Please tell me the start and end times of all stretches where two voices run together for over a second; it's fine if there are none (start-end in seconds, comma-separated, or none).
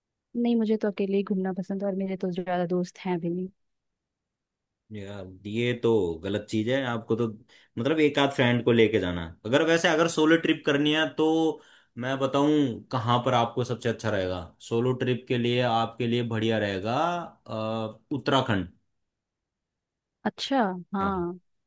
none